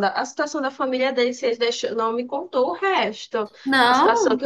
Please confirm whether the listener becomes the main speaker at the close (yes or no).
no